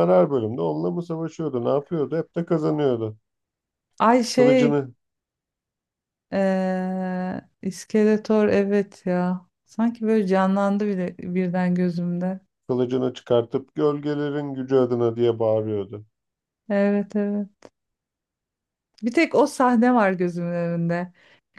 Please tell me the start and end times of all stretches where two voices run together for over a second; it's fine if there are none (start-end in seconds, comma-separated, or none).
none